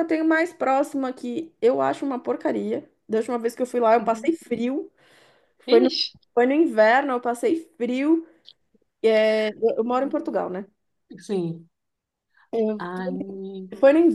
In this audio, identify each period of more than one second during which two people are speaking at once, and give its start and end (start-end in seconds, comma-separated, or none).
none